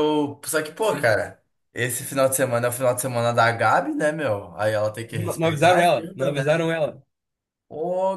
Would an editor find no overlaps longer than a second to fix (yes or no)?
no